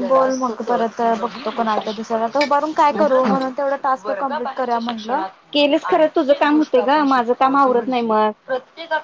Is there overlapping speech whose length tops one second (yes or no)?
yes